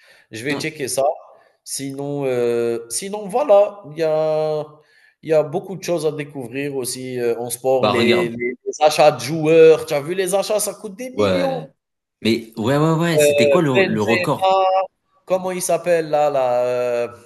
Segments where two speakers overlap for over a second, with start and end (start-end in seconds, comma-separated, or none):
13.2-14.5